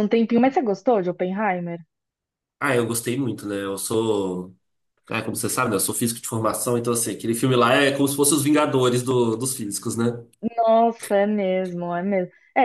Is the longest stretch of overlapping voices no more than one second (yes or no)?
yes